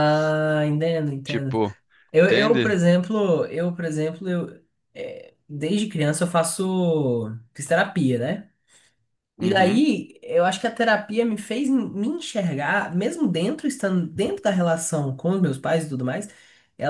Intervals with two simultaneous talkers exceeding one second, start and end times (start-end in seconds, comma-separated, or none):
none